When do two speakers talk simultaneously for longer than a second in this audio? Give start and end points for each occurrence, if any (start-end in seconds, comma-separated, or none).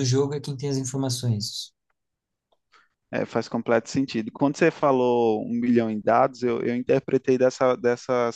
none